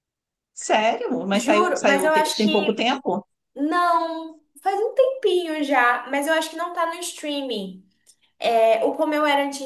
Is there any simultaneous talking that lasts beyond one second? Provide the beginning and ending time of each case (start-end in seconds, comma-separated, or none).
1.3-2.9